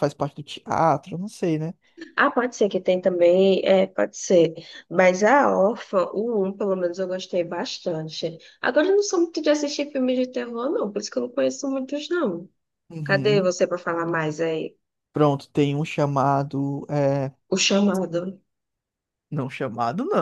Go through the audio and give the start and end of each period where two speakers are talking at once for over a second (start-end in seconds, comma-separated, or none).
none